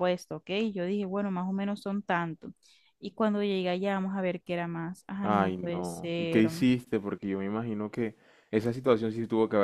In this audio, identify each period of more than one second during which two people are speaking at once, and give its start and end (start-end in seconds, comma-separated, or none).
5.2-6.5